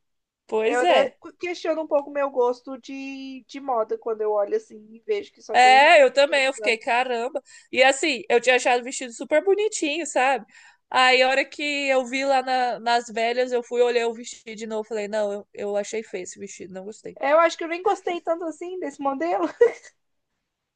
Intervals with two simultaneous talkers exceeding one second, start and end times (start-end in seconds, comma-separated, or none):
5.5-6.8